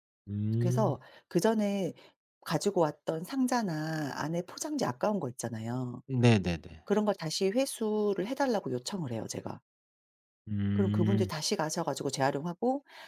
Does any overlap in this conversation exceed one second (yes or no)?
no